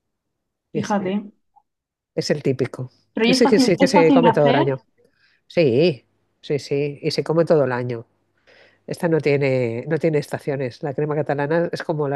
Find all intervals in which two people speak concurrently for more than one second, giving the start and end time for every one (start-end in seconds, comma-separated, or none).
3.1-4.7